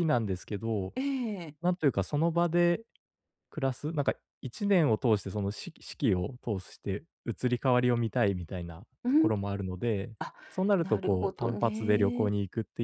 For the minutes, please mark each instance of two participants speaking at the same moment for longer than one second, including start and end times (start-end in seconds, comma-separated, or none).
10.8-12.3